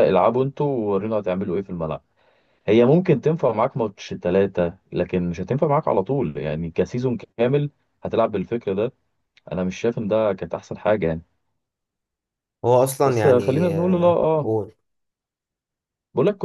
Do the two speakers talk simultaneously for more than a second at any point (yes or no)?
yes